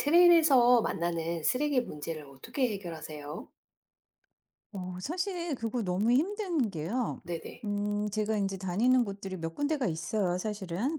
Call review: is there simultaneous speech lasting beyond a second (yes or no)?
no